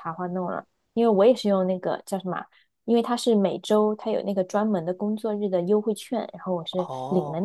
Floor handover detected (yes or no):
yes